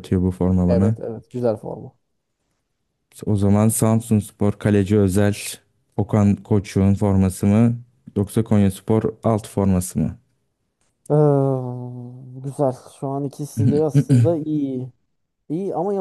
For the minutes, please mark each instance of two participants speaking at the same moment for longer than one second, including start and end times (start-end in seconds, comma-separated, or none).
none